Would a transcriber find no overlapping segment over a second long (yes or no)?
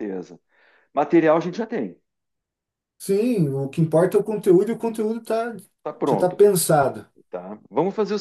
yes